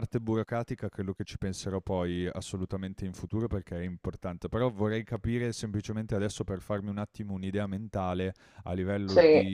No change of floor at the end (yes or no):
yes